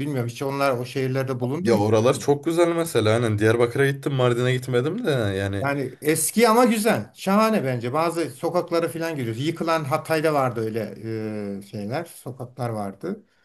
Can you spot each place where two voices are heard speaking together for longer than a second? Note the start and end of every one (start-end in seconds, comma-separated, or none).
none